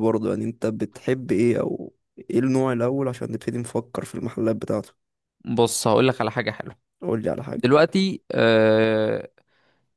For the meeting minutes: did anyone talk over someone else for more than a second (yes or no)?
no